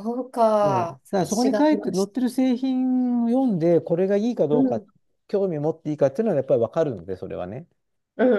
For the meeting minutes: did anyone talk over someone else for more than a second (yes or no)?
yes